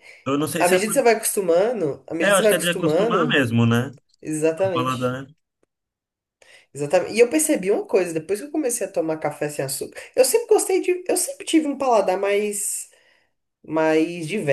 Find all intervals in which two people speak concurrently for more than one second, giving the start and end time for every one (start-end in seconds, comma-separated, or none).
2.2-3.4